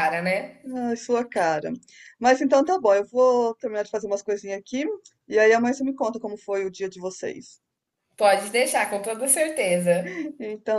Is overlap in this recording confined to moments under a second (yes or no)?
yes